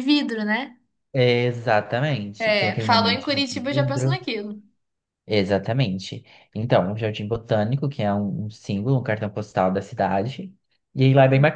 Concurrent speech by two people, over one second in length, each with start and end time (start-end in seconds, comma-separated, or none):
2.4-4.2